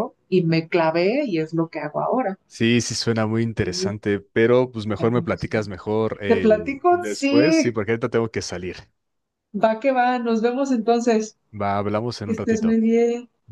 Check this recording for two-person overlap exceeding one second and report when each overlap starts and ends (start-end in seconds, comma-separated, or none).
6.3-7.8